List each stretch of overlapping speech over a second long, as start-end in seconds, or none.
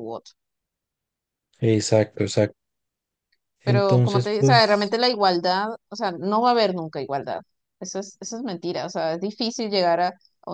3.6-5.0